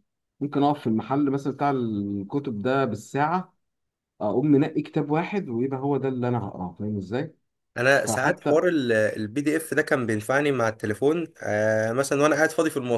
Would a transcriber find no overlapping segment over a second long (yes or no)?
yes